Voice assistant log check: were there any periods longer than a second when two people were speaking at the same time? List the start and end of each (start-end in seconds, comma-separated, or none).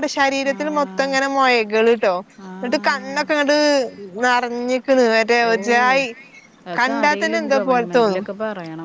6.8-8.2